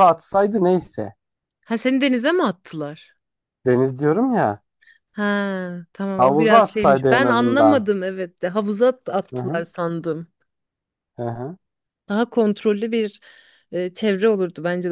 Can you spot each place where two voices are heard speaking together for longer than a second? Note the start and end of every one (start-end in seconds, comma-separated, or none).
6.2-7.8